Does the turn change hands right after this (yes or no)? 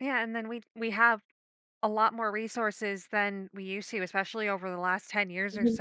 no